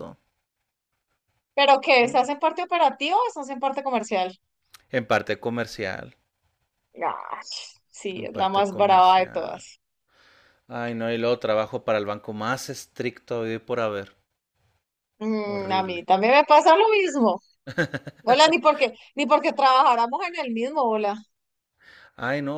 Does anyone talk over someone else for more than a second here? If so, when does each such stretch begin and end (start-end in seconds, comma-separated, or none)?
8.2-9.6